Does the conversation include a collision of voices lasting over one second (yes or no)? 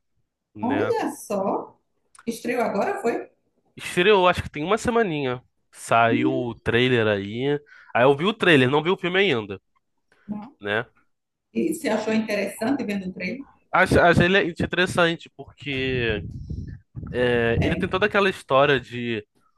no